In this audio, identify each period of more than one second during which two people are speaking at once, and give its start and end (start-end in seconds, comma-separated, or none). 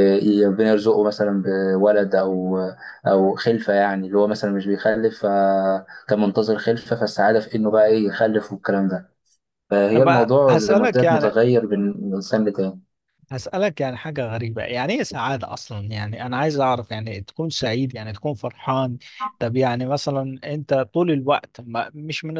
9.9-11.4